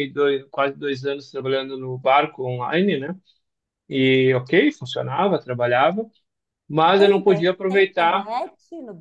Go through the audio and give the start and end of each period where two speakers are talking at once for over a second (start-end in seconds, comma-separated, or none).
7.0-8.3